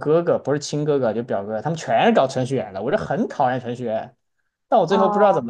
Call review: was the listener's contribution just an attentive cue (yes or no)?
yes